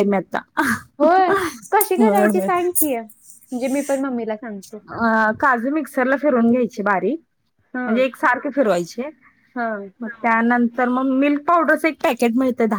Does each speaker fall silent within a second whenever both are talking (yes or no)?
yes